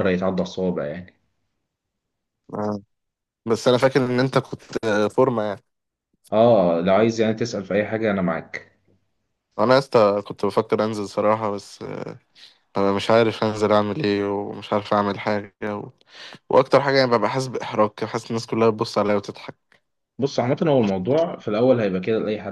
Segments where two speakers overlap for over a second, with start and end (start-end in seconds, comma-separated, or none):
none